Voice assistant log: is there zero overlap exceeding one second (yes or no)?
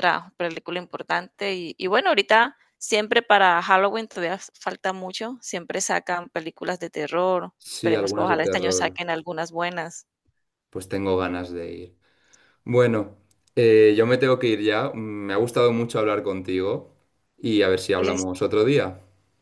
no